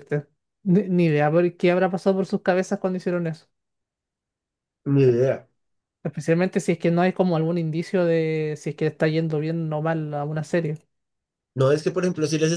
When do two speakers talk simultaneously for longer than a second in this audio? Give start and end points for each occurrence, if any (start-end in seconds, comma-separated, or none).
none